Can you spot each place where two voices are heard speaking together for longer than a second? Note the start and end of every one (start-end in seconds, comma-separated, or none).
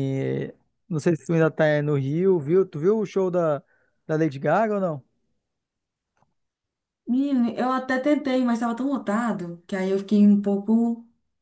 none